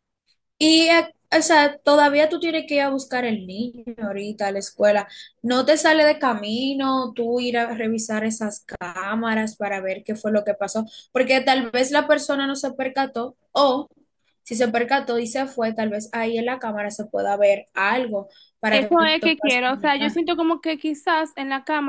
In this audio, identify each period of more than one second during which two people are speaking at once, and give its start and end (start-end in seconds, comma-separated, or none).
18.7-20.2